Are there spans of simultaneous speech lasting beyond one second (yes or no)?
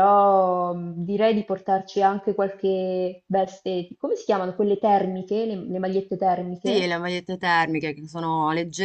no